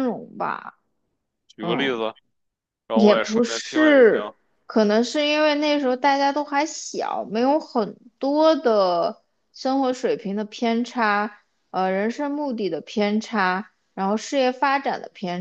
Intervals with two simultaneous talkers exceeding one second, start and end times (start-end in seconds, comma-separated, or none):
2.9-4.3